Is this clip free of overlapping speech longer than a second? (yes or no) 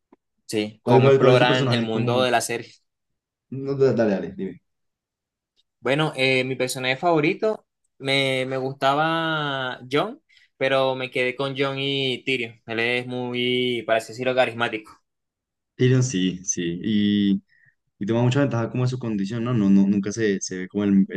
no